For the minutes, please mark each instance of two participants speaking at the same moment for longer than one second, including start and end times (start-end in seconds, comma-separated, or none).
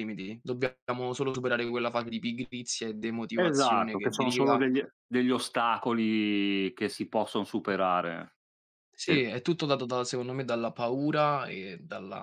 3.3-4.6